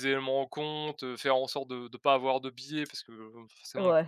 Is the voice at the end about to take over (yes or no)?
no